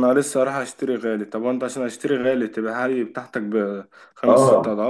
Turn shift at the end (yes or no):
yes